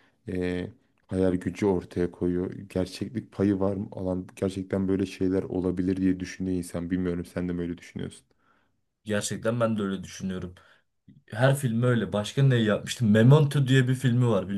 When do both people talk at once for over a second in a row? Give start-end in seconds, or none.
none